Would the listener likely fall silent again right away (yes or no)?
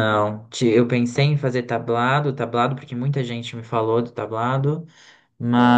yes